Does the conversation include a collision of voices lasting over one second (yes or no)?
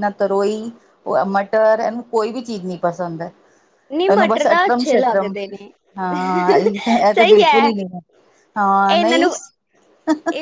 yes